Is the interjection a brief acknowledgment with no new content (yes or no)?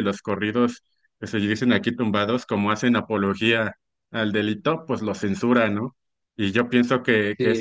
yes